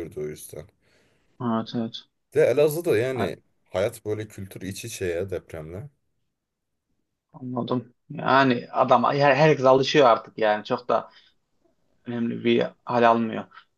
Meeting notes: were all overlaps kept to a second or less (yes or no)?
yes